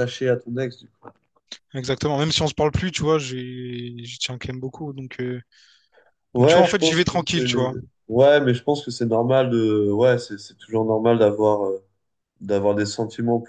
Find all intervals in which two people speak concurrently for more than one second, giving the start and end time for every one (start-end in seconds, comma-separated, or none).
6.4-7.7